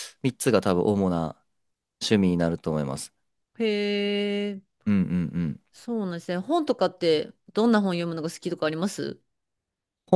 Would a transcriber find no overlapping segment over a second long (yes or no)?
yes